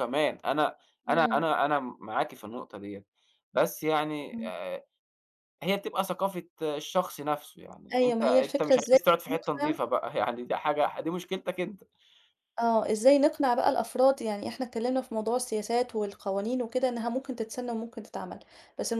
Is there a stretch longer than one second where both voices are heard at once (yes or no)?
yes